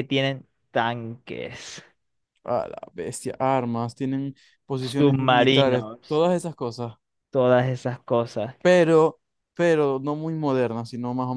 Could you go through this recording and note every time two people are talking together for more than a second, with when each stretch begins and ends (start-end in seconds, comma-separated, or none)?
4.8-6.2